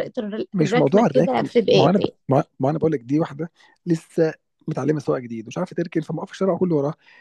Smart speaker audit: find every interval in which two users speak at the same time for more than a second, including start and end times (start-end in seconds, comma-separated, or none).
0.5-2.1